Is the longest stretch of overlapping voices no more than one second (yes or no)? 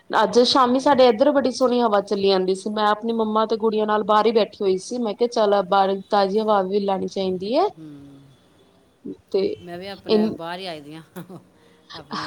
yes